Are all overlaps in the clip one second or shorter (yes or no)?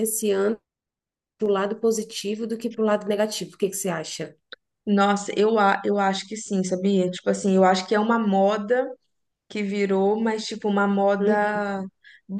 yes